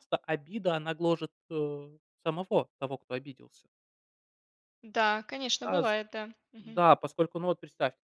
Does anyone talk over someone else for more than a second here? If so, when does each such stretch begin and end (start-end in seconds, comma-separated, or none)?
none